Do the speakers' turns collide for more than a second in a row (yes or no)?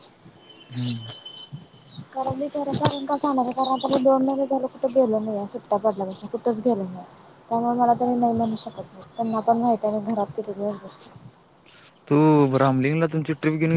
no